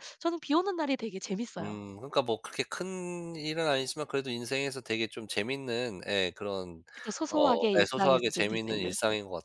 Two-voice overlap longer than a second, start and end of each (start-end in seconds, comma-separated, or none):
7.3-8.9